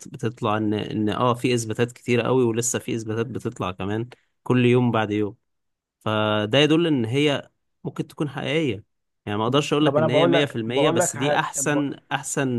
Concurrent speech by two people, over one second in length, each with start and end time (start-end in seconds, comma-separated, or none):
9.8-11.8